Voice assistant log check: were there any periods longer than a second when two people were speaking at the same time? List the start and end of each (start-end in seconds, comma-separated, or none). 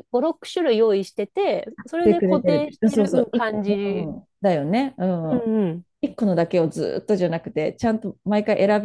2.0-3.7